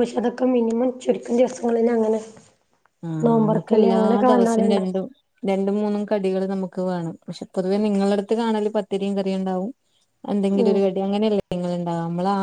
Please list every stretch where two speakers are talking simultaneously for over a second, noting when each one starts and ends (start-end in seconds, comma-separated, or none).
3.2-5.0